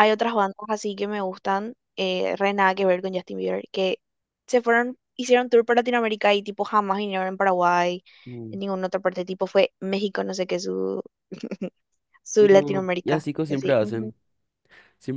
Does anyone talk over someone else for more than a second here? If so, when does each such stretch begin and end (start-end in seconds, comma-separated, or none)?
12.4-14.1